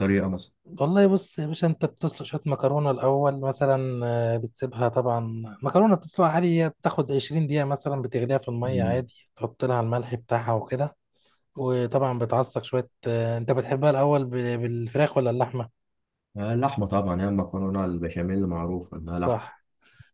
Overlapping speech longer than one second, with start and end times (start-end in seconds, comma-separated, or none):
none